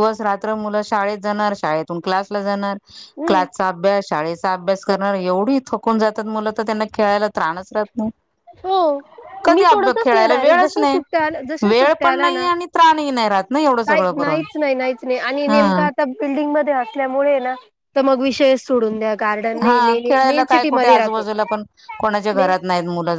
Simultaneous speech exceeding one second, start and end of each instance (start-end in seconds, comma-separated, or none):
9.6-11.0, 19.6-21.2